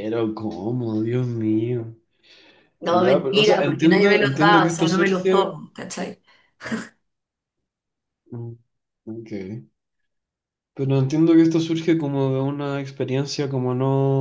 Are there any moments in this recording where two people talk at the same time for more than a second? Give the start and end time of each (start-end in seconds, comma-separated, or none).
2.9-5.5